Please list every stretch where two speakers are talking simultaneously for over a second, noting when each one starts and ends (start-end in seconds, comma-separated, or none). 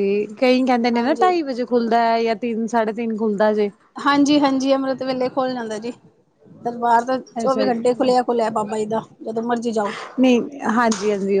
none